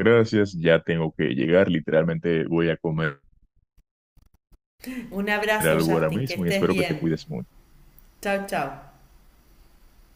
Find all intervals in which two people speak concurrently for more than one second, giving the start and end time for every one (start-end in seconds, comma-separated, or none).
5.6-7.1